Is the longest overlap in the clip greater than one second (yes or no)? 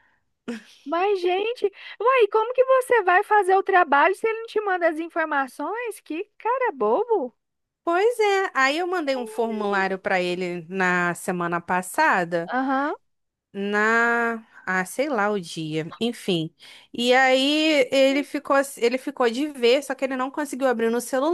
no